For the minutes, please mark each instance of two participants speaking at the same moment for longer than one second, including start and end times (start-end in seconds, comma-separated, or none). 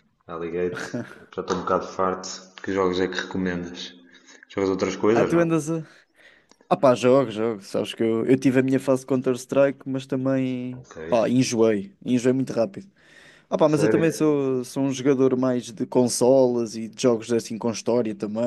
none